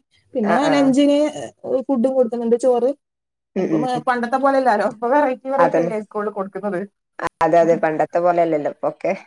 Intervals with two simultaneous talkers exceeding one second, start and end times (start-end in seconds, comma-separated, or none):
none